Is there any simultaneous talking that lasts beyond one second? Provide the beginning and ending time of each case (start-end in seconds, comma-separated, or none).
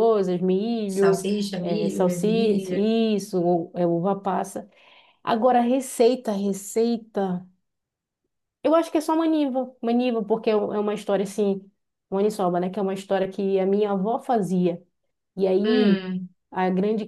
1.0-2.9